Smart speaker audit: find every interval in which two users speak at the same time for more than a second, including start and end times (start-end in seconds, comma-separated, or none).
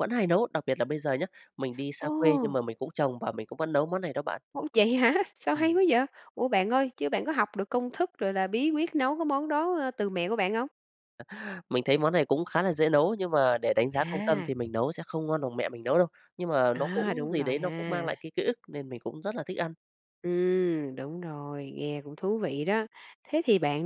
16.7-18.1